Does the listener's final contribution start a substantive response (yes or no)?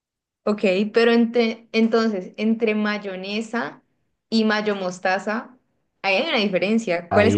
yes